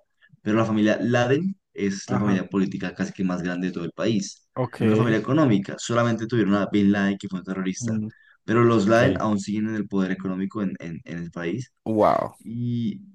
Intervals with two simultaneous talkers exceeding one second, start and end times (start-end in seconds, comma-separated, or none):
none